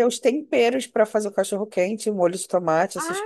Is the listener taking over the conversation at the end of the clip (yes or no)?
yes